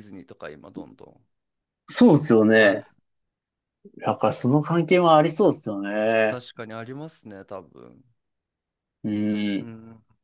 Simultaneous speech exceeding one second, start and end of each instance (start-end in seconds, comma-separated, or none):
none